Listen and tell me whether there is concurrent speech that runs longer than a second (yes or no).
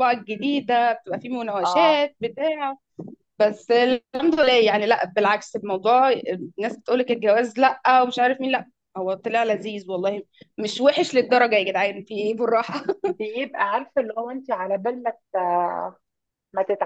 no